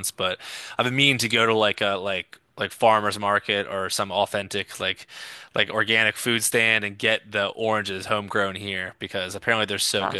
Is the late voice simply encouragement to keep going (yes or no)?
no